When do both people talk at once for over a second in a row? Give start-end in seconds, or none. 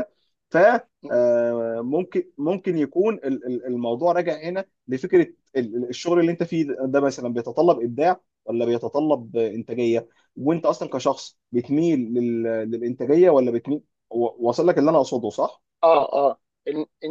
none